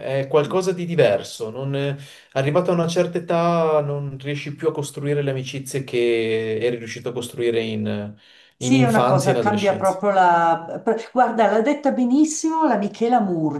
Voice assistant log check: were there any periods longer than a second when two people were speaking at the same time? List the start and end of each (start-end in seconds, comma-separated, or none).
8.6-10.0